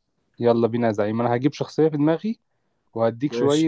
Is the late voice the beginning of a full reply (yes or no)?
no